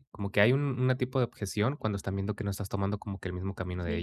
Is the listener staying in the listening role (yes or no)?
yes